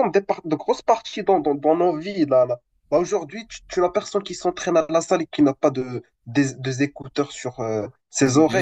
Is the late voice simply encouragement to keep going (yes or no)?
no